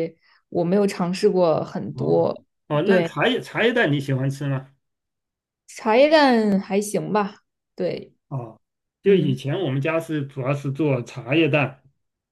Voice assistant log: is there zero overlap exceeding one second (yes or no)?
yes